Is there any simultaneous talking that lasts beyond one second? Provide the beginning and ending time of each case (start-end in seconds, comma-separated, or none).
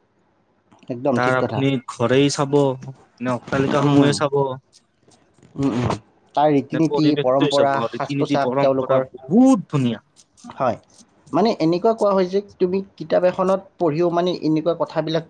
6.8-9.1